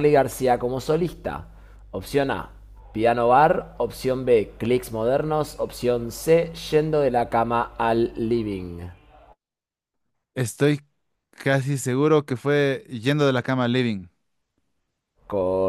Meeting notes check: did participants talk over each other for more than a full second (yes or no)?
no